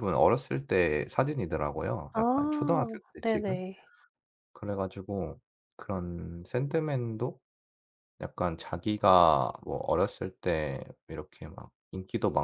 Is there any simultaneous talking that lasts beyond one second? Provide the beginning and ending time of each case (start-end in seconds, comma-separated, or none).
2.2-3.6